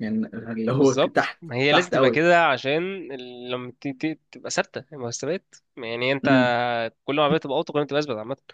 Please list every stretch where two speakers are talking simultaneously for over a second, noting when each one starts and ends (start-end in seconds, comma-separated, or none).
0.7-2.2